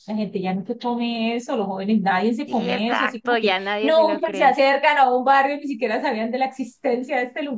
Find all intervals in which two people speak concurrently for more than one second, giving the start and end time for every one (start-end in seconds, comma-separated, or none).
2.5-4.6